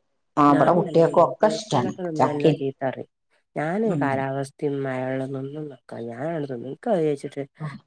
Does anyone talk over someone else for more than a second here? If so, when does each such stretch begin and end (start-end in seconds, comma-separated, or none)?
0.5-2.5